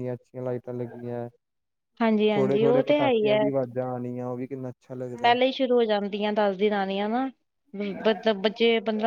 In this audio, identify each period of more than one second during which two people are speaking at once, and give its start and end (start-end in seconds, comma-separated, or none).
2.3-3.5